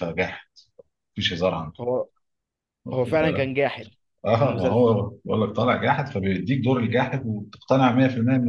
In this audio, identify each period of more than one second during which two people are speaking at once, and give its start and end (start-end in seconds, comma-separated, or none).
none